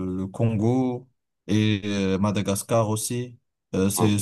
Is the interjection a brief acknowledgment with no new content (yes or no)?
yes